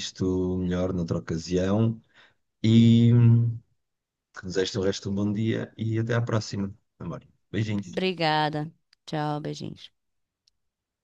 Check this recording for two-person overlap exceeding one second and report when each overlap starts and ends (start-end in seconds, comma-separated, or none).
none